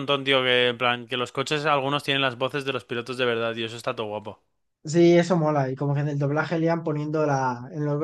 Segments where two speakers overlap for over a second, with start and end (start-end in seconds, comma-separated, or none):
none